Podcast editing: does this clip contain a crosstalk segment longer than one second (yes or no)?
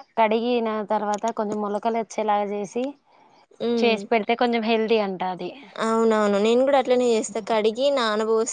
no